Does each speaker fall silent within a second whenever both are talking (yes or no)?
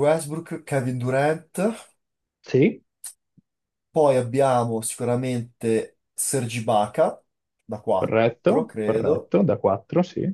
no